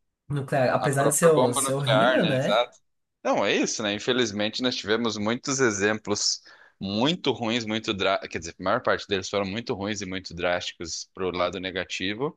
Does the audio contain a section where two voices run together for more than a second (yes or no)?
yes